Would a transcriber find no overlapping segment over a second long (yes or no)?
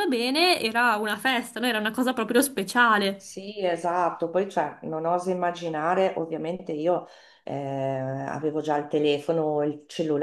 yes